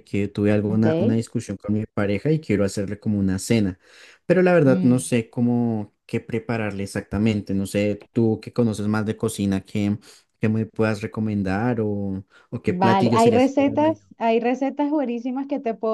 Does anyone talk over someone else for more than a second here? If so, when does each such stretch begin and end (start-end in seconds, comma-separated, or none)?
12.6-14.0